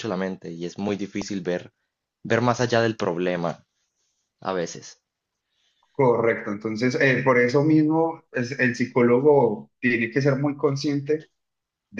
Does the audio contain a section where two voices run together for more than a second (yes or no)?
no